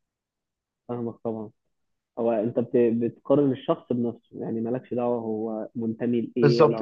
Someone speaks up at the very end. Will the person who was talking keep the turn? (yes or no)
no